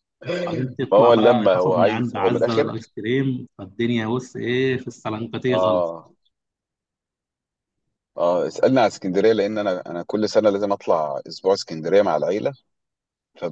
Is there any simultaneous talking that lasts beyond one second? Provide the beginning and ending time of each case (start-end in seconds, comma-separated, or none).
0.9-2.7